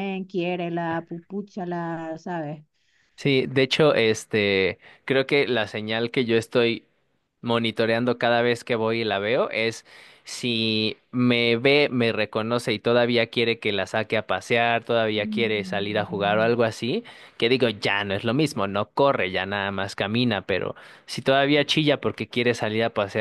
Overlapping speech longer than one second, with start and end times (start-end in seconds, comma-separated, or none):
15.2-16.5